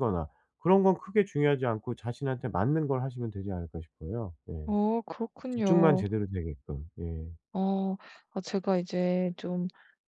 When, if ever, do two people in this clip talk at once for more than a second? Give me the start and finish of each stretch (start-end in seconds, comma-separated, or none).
none